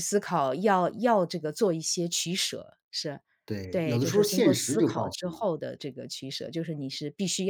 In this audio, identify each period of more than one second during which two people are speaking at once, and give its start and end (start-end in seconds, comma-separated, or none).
3.7-5.4